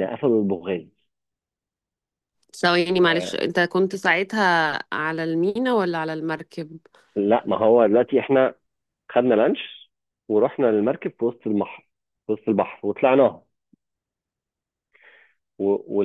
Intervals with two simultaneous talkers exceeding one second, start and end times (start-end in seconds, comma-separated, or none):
none